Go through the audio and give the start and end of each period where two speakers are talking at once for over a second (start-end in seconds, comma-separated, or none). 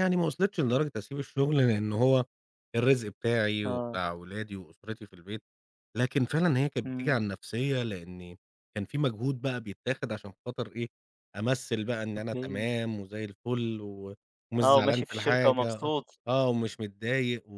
14.6-15.9